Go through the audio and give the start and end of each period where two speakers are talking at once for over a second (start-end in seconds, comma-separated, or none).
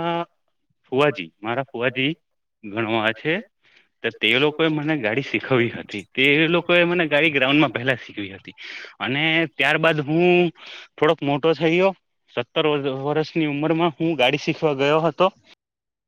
5.4-7.9